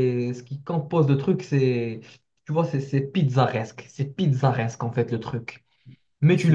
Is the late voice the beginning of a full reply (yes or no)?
no